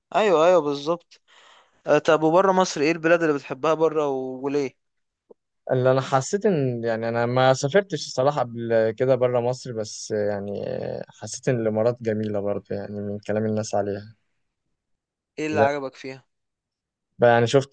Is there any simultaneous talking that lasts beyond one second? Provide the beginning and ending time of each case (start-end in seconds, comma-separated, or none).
none